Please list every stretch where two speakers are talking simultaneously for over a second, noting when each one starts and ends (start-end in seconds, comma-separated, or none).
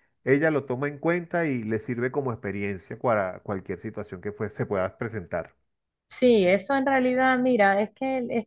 none